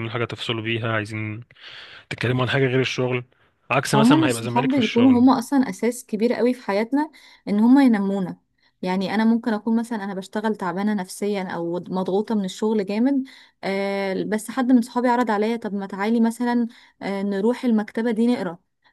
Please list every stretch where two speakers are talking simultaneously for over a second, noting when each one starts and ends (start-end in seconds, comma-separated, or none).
3.9-5.2